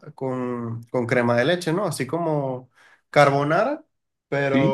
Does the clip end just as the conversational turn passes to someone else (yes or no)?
no